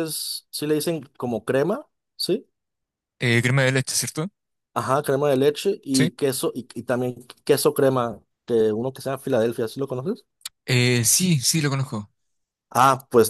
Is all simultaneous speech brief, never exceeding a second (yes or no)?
yes